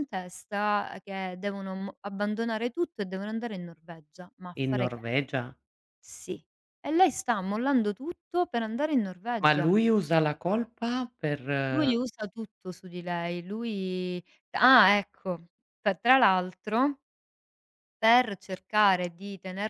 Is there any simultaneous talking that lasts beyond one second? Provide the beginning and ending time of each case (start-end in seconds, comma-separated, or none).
none